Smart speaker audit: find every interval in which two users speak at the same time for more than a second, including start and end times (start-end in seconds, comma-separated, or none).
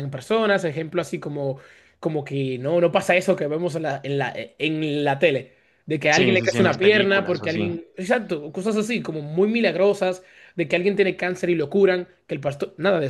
6.1-7.7